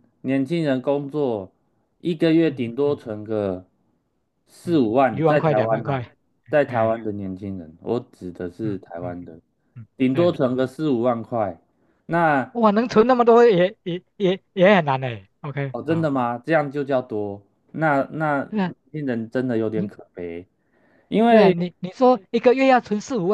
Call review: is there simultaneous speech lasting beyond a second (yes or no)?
yes